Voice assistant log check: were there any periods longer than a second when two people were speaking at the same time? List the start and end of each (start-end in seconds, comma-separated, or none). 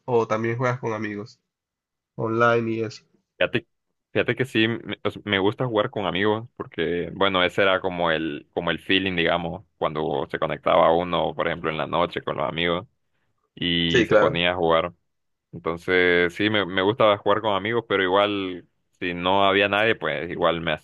none